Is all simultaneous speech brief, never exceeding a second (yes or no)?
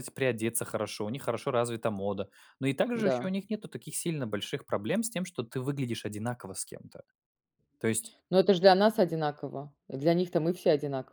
yes